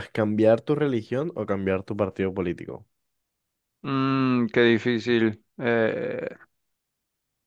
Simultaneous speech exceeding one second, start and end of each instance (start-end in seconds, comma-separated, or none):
none